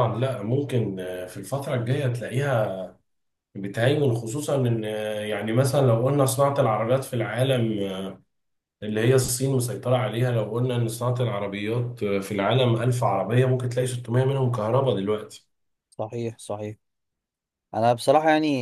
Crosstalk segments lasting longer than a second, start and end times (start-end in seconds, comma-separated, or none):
none